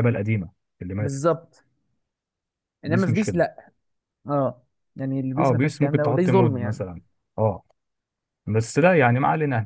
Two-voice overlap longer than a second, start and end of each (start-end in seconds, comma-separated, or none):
5.4-6.8